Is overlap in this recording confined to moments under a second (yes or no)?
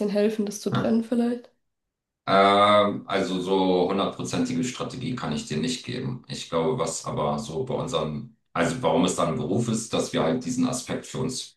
yes